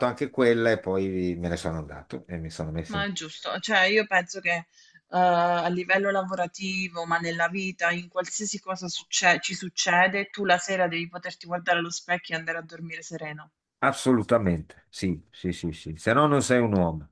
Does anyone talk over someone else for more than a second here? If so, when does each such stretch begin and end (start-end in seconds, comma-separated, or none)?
none